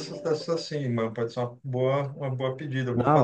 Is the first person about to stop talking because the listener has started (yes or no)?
yes